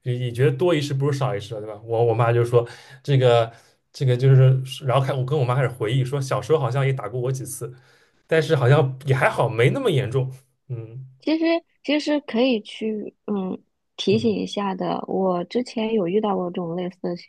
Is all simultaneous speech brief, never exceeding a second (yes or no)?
yes